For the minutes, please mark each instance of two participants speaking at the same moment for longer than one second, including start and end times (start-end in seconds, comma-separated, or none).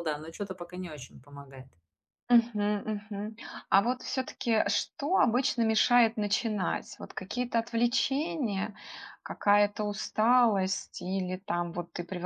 none